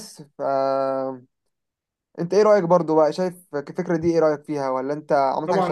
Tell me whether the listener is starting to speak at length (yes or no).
yes